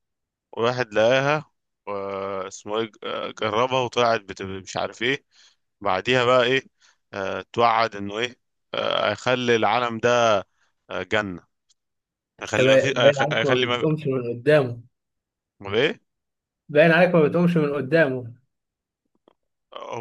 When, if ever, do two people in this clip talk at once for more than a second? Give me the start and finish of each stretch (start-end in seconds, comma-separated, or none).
12.4-13.8